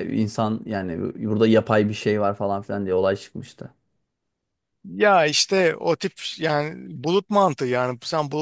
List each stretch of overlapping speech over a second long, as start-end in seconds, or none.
none